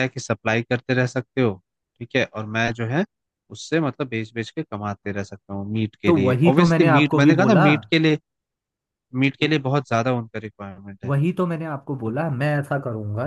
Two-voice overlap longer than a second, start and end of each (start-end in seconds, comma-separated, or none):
6.1-7.7